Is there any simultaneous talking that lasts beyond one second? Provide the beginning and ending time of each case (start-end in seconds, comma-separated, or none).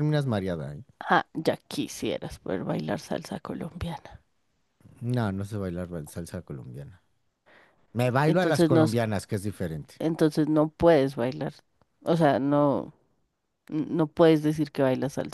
none